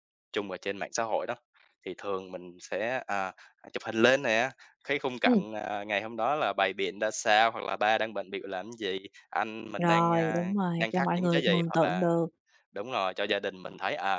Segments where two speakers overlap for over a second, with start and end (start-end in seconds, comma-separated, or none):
9.8-12.1